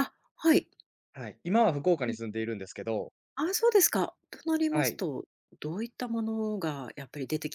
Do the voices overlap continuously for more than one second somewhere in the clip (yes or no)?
no